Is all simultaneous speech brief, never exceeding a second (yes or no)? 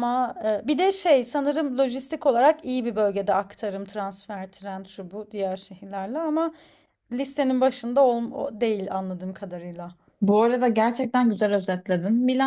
yes